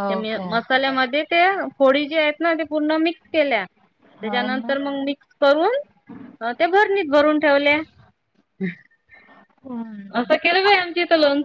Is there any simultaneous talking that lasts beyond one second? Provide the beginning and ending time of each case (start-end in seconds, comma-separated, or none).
none